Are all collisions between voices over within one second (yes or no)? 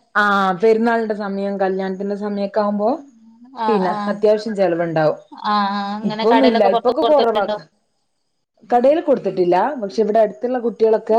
no